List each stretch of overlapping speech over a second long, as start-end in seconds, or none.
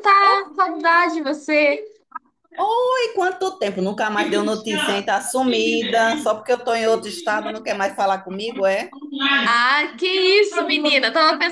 none